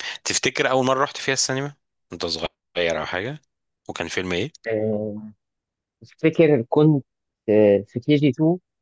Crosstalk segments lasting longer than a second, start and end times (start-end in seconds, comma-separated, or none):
none